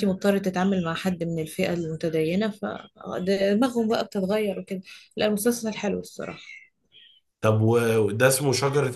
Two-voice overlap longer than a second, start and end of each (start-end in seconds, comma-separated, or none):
none